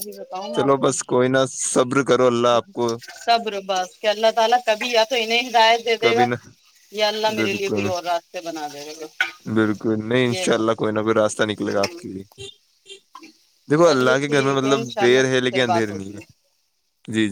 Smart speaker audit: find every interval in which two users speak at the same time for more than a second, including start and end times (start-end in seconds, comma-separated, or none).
13.8-16.1